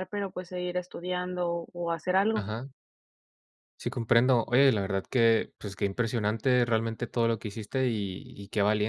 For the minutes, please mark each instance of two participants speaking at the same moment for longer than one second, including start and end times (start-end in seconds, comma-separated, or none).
none